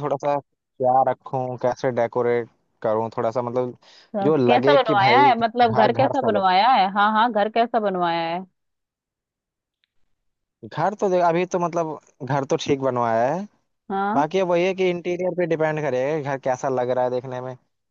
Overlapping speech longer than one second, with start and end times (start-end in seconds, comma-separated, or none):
4.2-6.5